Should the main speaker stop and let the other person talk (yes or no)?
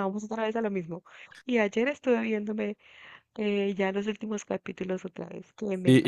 yes